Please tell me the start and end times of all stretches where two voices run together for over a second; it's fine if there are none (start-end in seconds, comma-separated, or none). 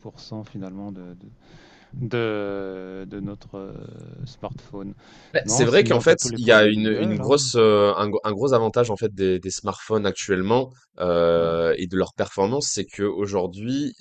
5.5-7.4